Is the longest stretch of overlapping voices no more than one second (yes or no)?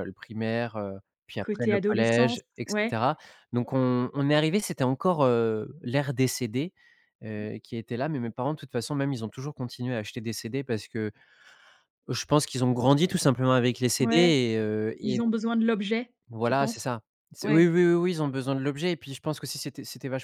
no